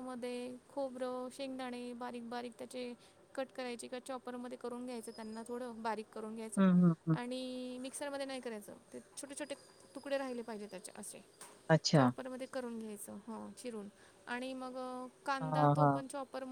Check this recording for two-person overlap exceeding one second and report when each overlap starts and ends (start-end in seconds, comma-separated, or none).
none